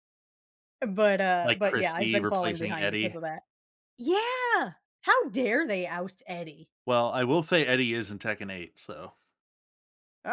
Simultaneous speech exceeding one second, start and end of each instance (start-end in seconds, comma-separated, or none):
1.4-3.1